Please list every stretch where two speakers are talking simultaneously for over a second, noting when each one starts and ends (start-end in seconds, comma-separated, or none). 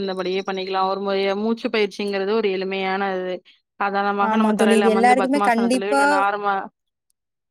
4.3-6.0